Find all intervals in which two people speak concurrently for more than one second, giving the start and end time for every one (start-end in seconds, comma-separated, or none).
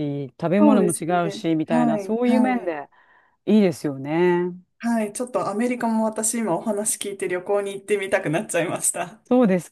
0.6-2.7